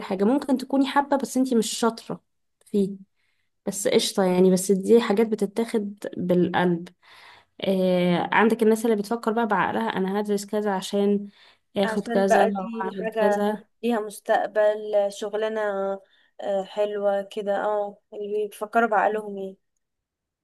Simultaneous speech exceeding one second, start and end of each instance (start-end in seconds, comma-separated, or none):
11.8-13.4